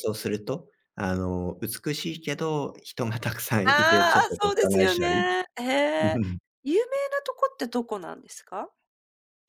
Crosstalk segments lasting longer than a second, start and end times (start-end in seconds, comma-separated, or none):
3.6-5.2